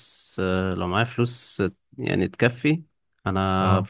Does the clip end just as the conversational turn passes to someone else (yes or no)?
no